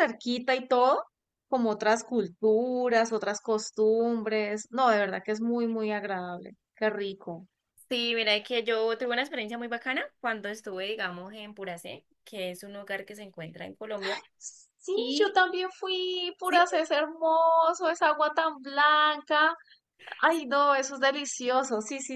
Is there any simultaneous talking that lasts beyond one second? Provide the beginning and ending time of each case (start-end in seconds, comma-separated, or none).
none